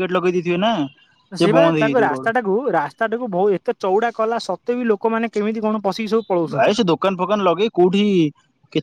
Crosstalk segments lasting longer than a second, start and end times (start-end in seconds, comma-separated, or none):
none